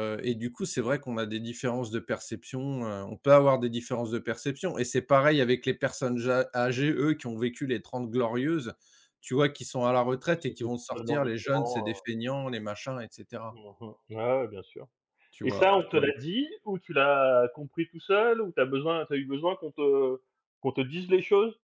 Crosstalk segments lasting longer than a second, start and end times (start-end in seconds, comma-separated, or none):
10.4-12.0